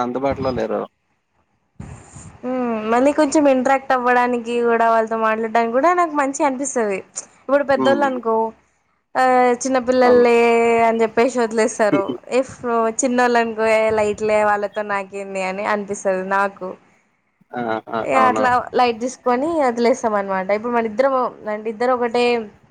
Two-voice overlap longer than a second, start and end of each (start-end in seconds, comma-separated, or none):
none